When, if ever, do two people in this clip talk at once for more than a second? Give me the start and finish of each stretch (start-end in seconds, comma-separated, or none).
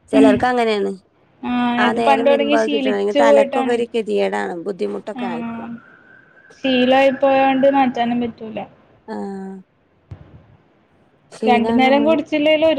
1.9-3.8